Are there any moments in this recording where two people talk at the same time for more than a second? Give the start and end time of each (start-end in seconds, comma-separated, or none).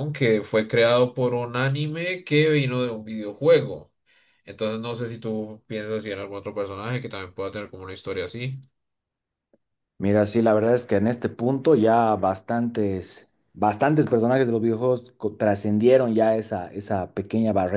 none